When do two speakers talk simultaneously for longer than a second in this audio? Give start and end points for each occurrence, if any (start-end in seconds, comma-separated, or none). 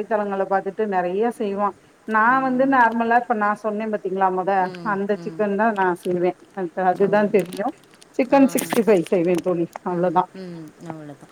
none